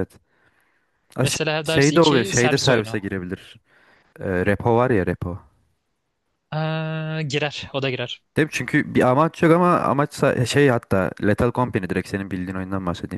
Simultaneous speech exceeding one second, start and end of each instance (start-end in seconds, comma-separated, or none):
1.2-3.0